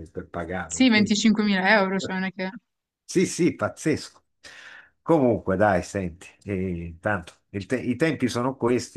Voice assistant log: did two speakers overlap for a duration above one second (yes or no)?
no